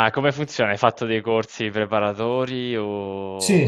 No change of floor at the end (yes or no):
no